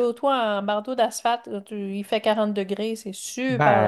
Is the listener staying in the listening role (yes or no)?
no